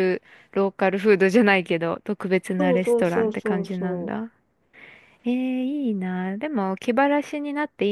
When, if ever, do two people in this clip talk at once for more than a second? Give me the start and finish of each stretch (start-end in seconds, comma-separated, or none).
2.6-4.2